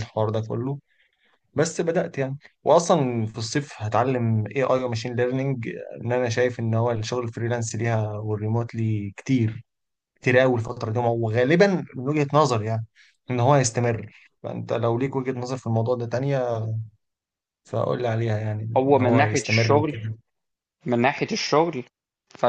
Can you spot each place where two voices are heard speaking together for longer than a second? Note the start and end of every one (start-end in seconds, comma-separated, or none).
18.8-20.0